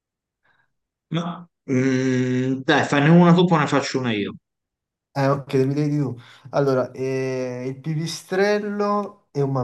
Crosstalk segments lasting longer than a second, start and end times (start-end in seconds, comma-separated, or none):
none